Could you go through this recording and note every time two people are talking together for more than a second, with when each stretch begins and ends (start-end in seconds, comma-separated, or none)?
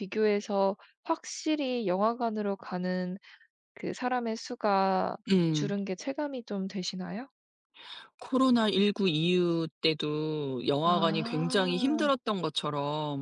10.8-12.1